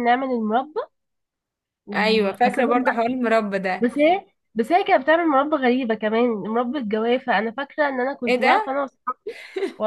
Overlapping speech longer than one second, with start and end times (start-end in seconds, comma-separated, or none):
1.9-3.2